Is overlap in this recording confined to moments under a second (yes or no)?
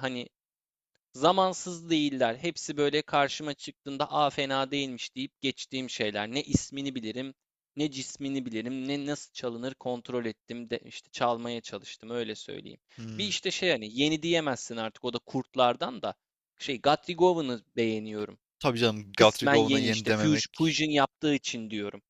no